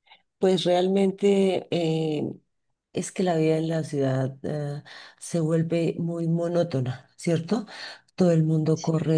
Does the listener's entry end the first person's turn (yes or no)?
no